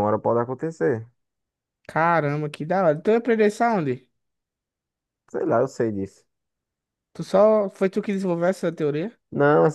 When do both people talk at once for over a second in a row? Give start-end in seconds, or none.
none